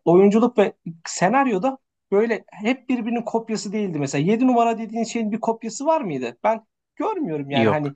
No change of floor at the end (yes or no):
yes